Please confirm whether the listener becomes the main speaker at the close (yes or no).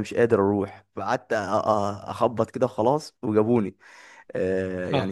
no